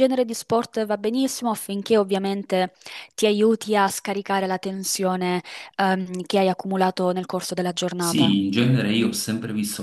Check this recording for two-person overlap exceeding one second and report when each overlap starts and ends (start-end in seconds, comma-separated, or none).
none